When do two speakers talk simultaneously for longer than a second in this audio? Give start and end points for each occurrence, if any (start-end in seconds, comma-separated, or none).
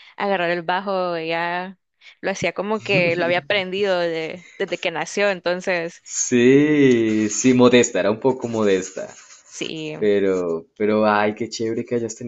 none